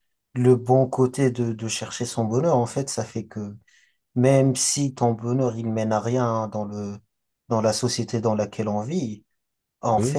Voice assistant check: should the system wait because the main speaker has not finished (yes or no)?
yes